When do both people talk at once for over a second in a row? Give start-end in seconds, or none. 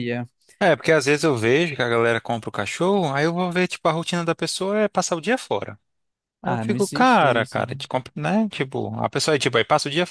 6.4-7.8